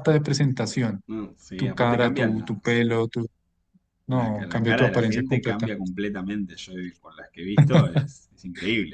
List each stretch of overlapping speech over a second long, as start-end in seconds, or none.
1.6-2.8, 4.1-5.7